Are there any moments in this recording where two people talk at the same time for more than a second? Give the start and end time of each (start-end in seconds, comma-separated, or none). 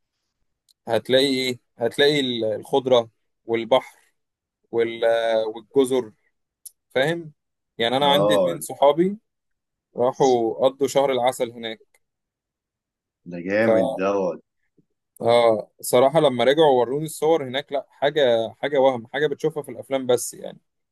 none